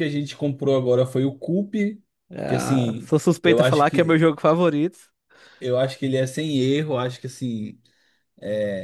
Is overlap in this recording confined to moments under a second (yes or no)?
no